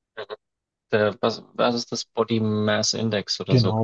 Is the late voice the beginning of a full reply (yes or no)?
yes